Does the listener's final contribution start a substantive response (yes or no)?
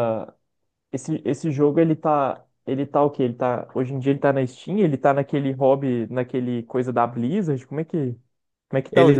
yes